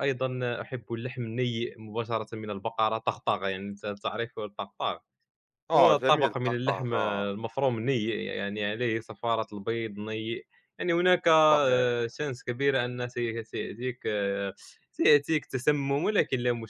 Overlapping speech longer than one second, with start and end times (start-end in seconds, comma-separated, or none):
5.8-7.3